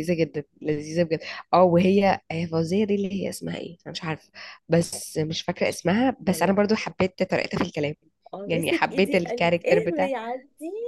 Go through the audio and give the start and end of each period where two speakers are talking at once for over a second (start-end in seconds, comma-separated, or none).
8.5-10.1